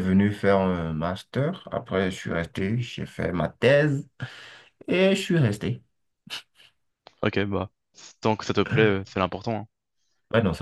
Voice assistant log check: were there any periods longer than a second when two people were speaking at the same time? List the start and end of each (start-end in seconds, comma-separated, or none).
none